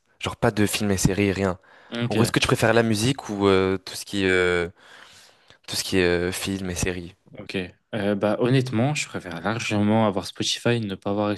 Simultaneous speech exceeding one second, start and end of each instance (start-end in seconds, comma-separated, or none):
none